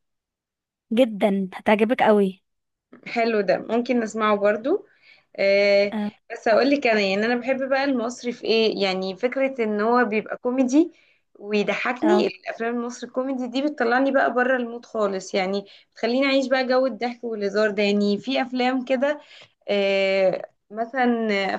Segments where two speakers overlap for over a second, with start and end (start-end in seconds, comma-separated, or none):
none